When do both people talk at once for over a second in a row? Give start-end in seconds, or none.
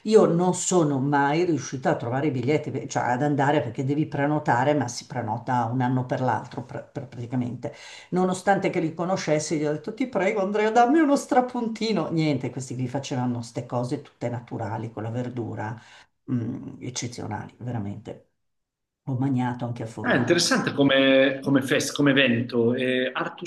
none